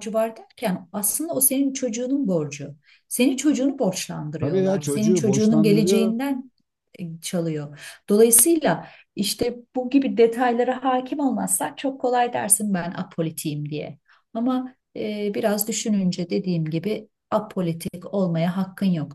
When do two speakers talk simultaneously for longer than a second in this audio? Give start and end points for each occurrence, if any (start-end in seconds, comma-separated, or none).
4.4-6.2